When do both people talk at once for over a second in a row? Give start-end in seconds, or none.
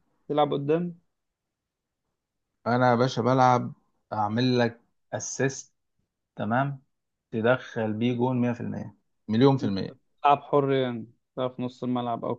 none